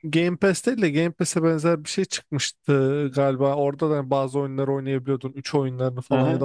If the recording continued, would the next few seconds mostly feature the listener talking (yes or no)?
no